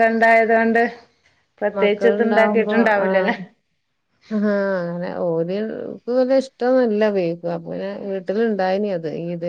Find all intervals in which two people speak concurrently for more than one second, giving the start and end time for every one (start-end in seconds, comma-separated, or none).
1.8-3.3